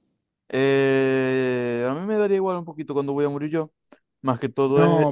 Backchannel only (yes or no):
no